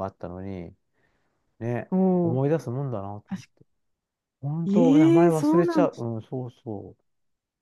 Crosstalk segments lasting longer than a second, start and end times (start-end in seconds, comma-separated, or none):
4.7-6.1